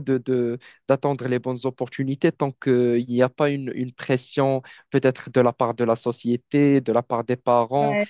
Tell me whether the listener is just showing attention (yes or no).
yes